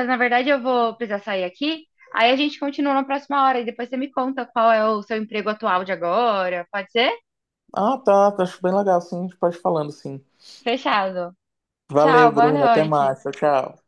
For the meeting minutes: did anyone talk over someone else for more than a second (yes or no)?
yes